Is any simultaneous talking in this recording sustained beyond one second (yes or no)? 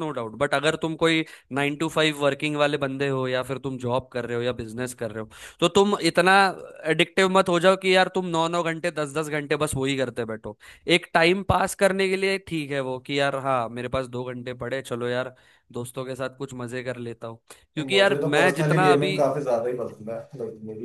yes